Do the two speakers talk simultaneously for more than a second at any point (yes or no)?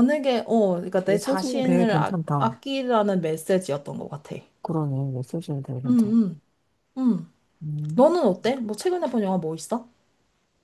yes